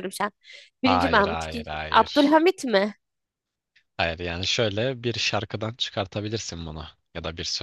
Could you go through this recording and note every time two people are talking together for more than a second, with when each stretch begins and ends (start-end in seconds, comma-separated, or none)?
0.8-2.4